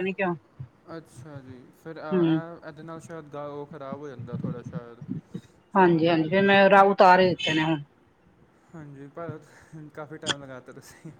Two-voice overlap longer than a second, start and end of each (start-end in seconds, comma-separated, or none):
none